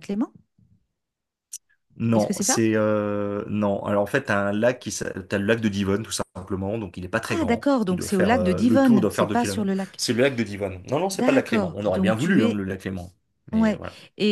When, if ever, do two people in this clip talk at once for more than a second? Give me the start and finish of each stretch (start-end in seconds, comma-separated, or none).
7.3-10.0, 11.1-12.6